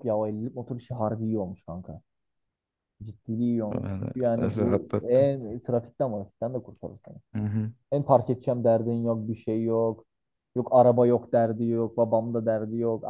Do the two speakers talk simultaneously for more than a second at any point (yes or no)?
yes